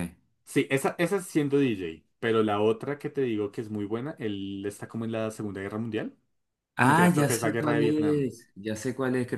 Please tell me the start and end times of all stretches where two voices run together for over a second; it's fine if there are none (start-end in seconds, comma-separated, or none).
6.8-8.3